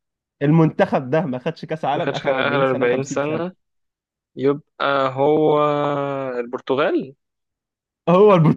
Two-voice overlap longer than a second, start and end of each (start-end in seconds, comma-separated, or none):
1.9-3.4